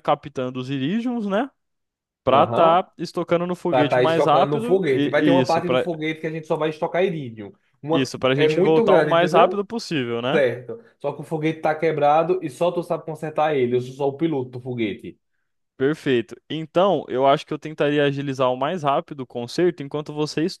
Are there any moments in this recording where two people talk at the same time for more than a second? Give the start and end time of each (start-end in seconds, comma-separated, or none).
3.7-5.9, 7.9-9.7